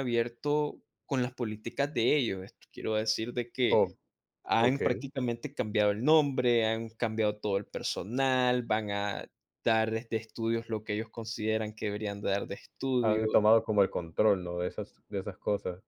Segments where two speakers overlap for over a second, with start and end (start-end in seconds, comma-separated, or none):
none